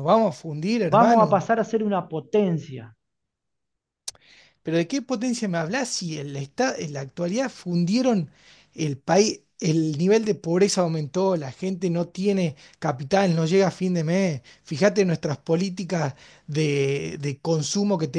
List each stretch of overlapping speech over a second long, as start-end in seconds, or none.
none